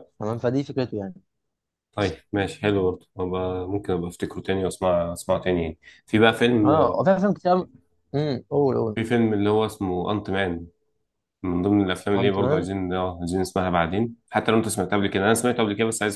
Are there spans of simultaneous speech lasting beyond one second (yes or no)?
no